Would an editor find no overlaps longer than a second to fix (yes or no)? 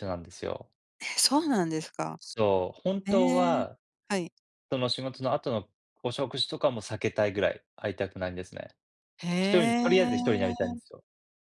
no